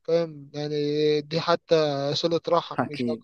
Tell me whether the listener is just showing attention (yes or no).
no